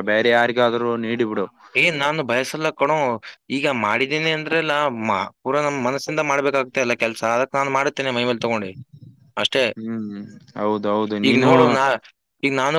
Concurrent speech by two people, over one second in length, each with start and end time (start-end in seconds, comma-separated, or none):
none